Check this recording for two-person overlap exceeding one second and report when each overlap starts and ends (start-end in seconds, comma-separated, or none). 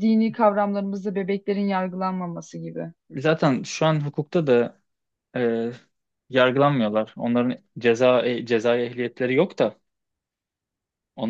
none